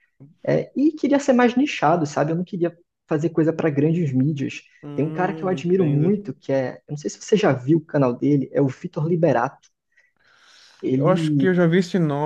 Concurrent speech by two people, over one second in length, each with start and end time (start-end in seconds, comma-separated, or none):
4.8-6.2